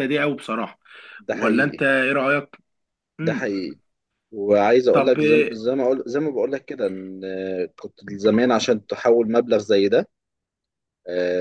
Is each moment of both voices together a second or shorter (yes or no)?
yes